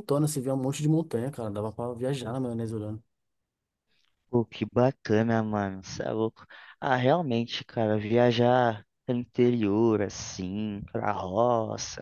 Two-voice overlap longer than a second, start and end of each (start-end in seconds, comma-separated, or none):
none